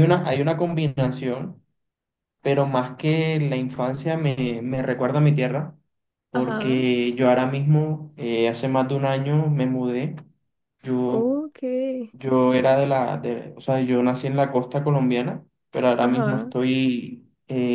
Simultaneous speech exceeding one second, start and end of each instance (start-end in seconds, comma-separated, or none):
none